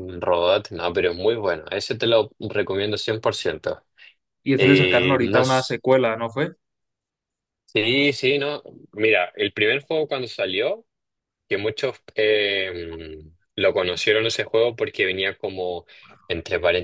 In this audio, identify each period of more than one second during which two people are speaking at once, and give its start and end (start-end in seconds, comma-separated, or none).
4.6-5.8